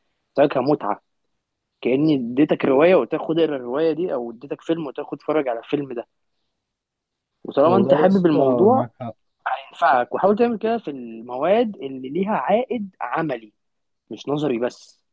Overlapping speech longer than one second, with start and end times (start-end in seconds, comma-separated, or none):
7.7-8.9